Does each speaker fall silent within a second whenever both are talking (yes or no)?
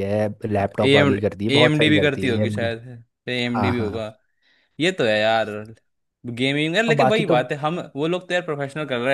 no